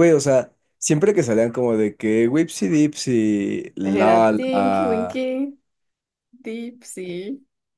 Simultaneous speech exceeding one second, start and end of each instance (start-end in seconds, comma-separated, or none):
3.8-5.2